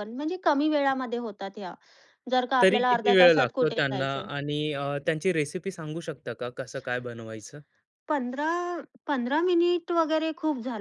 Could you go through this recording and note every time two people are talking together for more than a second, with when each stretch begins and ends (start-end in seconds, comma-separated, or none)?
2.6-4.3